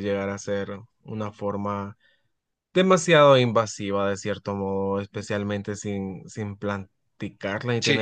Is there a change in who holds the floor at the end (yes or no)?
no